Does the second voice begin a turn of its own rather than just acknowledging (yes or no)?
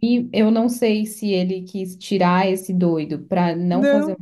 no